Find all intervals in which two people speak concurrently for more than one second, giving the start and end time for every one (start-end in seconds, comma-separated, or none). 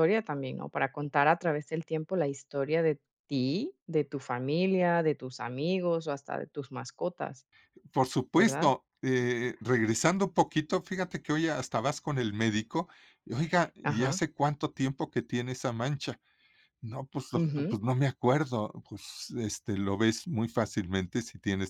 none